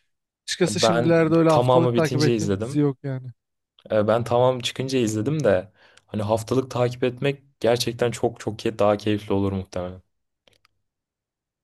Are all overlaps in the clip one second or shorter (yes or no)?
no